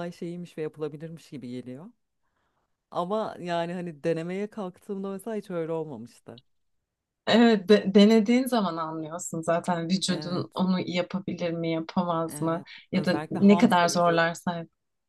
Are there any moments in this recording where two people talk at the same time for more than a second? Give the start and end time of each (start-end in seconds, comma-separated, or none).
12.3-14.3